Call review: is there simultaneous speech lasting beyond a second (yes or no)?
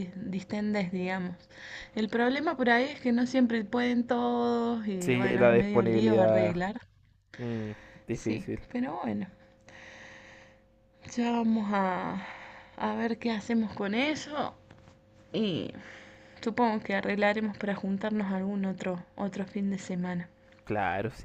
yes